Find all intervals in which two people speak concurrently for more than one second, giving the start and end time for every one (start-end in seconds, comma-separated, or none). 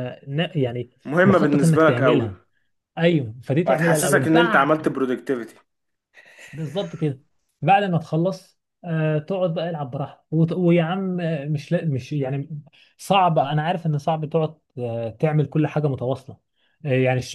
1.1-2.3, 3.7-4.9